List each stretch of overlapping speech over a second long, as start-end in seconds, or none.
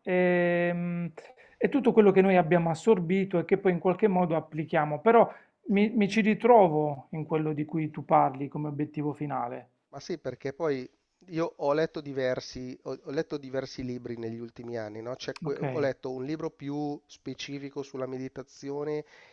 none